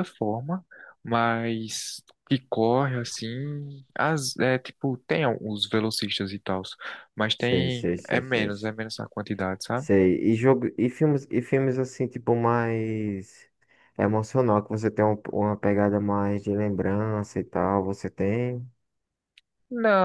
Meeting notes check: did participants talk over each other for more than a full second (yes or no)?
yes